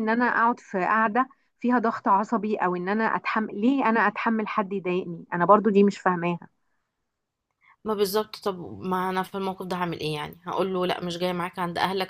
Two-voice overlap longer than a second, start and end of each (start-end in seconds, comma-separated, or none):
none